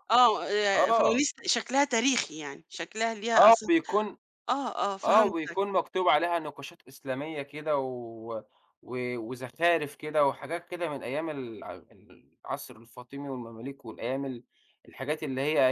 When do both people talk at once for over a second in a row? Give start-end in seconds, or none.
none